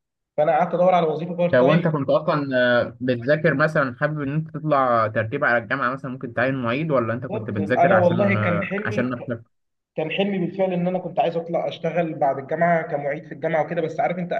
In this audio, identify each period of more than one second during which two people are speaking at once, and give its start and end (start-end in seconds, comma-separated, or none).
7.3-9.2